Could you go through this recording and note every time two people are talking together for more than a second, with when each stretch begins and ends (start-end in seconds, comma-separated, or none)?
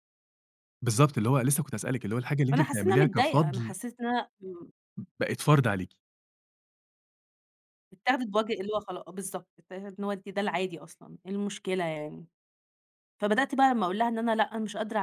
2.5-3.7